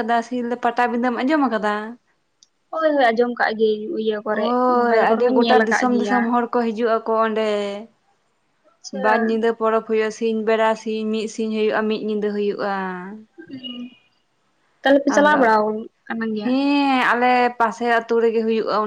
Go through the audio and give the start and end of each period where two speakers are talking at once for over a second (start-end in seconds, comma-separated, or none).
4.3-6.2